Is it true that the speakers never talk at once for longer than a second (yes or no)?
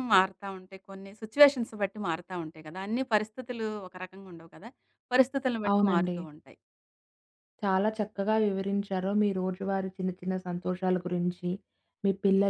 yes